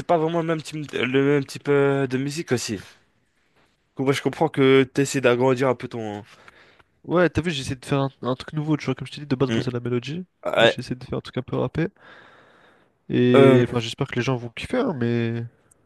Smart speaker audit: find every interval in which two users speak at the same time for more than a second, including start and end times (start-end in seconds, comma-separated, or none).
none